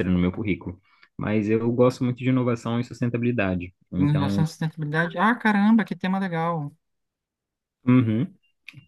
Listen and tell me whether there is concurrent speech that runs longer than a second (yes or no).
no